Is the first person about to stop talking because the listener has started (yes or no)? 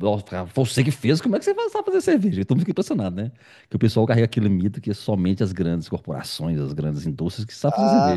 yes